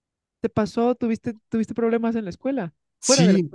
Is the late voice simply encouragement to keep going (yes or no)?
no